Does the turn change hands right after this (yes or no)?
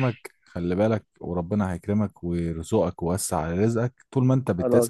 yes